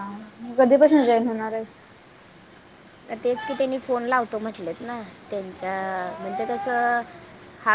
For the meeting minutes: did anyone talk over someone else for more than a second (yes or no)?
no